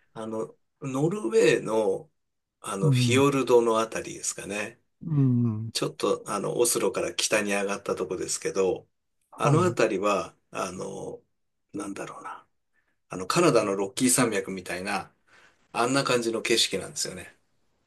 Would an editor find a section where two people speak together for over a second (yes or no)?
no